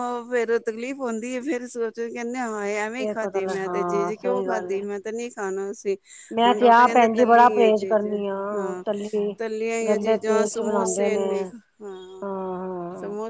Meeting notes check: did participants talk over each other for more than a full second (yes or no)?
yes